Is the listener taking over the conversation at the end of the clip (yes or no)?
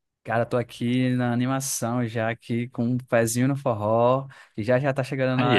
no